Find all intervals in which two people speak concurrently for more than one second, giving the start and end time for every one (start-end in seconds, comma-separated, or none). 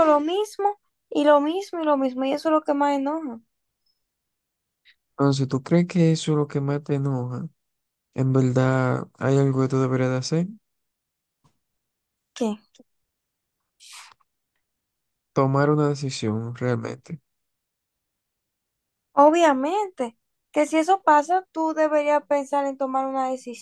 none